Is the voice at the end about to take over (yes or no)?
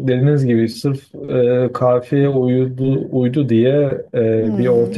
no